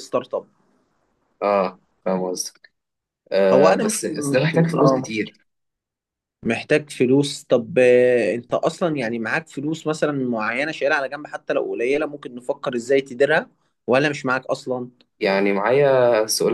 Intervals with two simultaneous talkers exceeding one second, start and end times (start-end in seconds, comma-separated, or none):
3.5-5.1